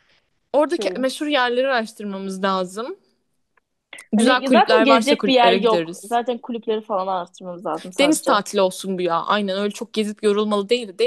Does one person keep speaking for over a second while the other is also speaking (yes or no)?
yes